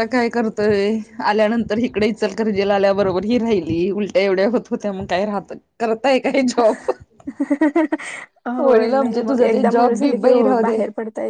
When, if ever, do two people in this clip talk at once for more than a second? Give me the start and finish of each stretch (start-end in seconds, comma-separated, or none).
8.7-10.8